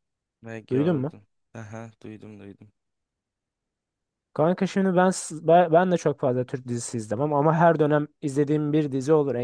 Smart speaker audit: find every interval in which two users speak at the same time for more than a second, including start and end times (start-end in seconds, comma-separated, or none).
none